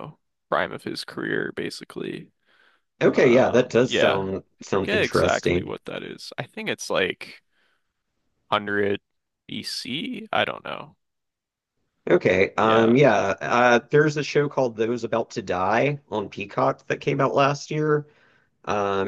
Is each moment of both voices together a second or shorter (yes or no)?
no